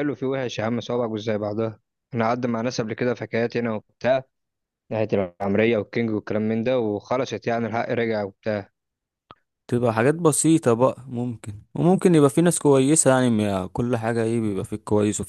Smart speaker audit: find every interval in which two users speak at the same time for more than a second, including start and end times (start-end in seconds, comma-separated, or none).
none